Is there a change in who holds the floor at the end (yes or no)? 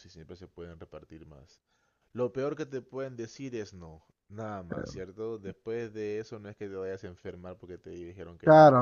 yes